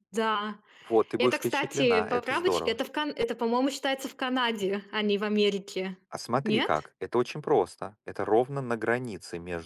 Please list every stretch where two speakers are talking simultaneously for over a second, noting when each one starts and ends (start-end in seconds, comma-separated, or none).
1.2-2.8